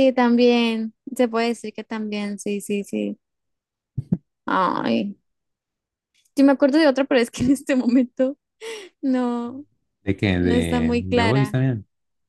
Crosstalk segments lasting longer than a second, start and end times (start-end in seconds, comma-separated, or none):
10.4-11.6